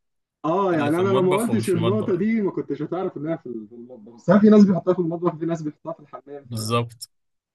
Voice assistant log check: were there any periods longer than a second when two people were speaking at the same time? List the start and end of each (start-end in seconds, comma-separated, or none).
0.7-2.3